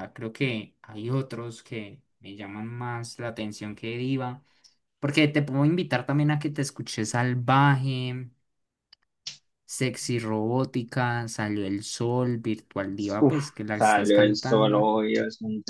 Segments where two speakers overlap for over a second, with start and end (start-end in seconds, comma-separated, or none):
13.2-14.9